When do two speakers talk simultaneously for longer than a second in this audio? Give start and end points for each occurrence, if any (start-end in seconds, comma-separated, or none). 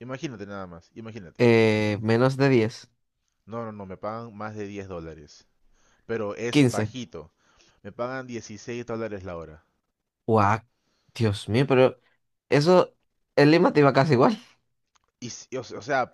none